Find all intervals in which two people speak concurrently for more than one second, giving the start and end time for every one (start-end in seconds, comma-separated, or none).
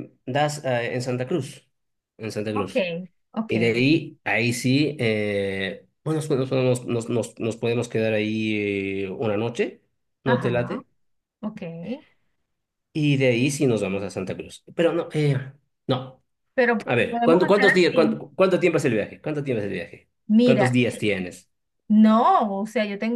16.9-18.2